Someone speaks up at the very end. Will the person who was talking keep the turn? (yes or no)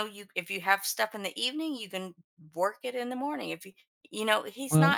yes